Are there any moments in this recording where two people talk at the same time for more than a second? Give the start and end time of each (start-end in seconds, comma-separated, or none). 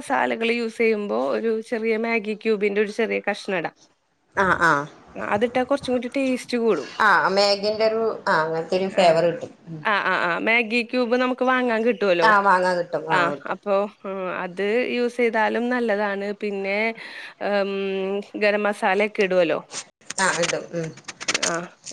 none